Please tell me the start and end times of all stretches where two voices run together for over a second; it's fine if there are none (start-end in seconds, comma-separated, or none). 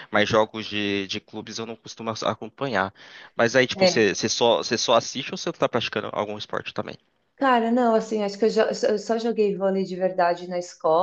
none